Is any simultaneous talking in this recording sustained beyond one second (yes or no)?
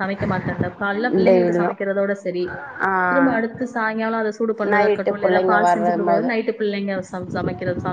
yes